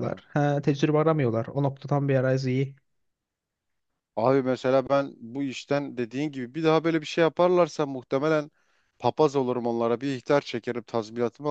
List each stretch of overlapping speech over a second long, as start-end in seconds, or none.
none